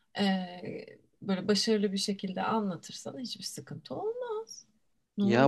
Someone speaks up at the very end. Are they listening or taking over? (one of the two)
taking over